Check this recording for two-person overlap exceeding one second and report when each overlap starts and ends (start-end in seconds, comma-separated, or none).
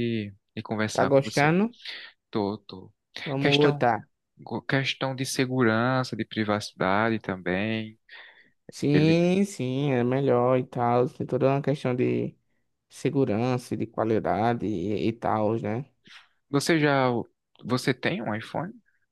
none